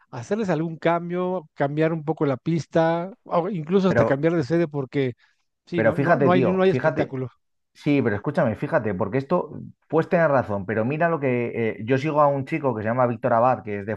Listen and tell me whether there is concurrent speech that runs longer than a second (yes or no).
yes